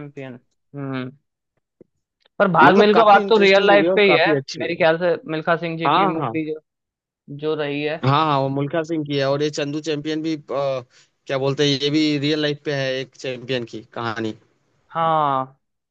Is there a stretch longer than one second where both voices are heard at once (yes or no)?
yes